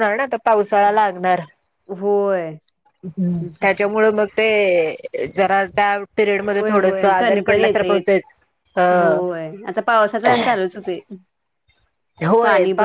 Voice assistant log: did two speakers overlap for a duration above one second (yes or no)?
yes